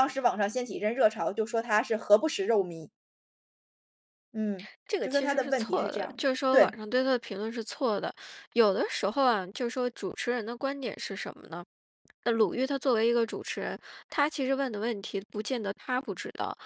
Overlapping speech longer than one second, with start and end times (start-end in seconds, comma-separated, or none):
4.9-6.8